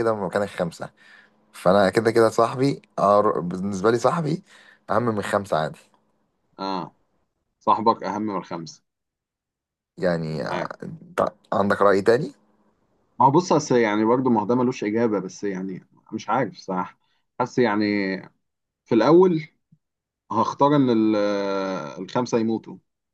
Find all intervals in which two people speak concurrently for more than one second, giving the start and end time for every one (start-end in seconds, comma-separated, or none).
none